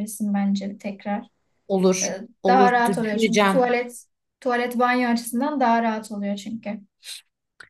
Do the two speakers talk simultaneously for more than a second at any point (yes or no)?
yes